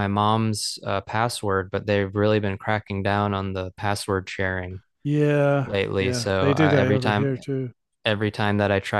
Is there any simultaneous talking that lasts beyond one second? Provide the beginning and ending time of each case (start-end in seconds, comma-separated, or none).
5.6-7.4